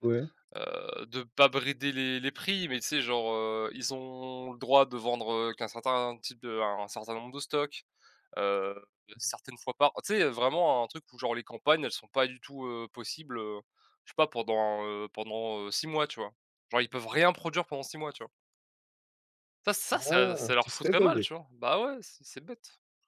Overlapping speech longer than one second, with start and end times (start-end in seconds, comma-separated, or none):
19.9-21.3